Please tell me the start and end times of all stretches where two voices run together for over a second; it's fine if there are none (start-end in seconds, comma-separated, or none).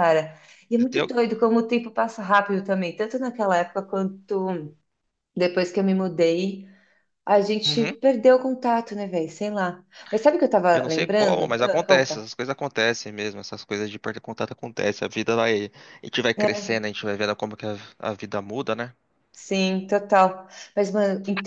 10.7-12.2